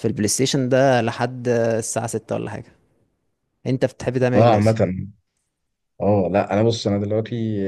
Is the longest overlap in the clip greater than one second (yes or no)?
no